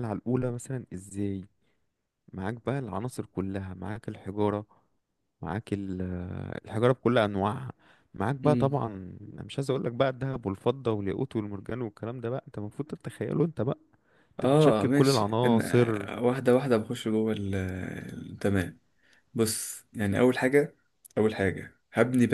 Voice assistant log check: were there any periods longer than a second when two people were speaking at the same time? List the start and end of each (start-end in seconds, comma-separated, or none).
14.4-15.6